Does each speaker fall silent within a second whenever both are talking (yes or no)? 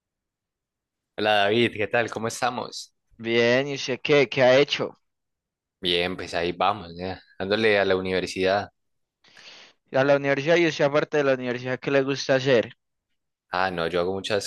yes